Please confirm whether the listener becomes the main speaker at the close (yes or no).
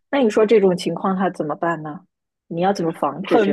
yes